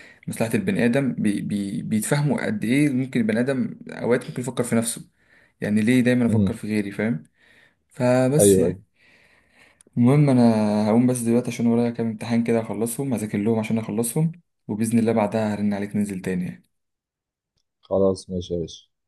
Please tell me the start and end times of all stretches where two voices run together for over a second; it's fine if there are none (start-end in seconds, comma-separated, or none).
none